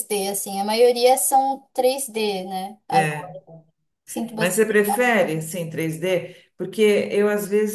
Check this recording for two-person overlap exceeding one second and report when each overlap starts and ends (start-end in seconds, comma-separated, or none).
none